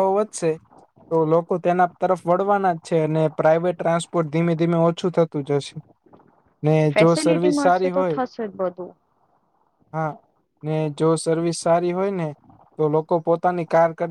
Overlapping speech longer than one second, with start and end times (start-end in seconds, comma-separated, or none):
7.0-8.2